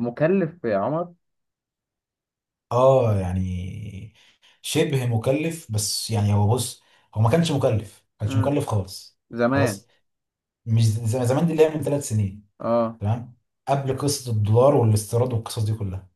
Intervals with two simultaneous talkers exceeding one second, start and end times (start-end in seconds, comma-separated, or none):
none